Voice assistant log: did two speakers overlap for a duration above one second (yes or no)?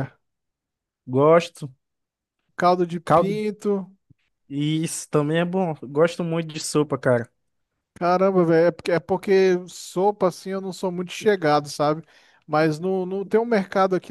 no